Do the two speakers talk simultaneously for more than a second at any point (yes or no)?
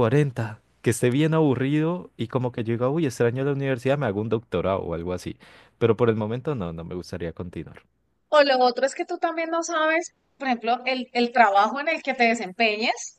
no